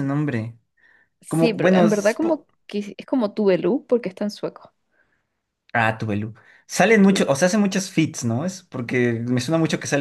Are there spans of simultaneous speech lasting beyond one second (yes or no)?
yes